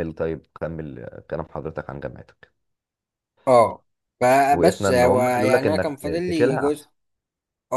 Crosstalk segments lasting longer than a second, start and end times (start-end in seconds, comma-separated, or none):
4.5-6.9